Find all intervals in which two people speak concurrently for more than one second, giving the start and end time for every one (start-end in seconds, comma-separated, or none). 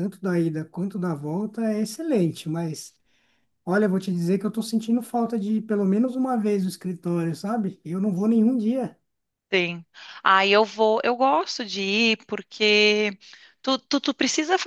none